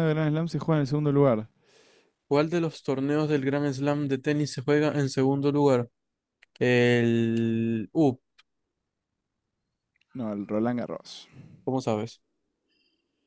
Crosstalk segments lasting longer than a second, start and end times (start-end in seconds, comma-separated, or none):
none